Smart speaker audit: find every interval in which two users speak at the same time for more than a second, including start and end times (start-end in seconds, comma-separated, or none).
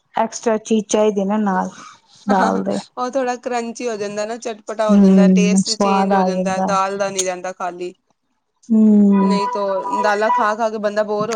4.9-6.2